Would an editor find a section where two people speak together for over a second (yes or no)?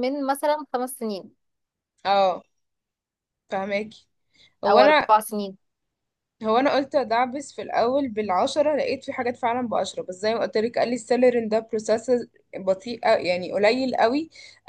no